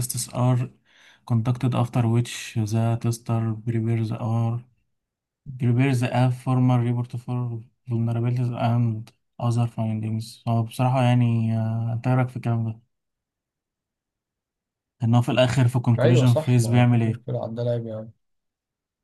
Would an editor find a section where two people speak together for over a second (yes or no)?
yes